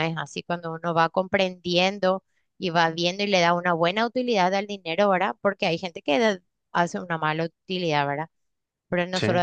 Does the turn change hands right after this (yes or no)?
no